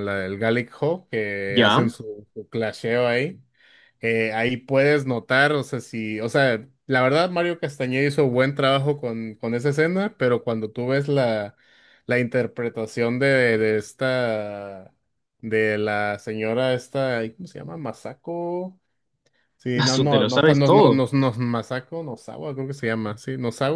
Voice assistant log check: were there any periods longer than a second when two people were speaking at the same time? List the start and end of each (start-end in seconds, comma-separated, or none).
19.8-21.0